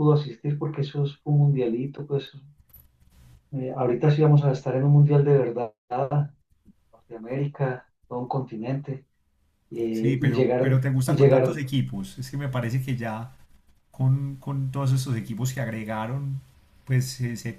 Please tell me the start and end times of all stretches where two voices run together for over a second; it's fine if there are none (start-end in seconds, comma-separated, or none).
9.9-11.6